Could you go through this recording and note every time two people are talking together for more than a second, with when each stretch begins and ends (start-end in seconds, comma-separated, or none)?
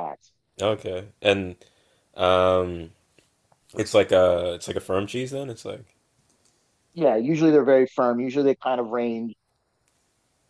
none